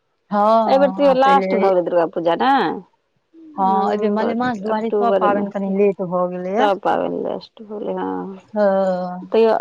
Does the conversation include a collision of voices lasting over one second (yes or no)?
yes